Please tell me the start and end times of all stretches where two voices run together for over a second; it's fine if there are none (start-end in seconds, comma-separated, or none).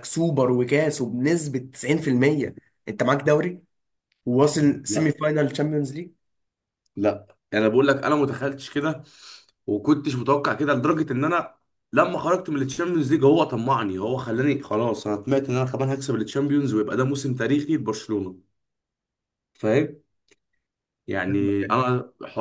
none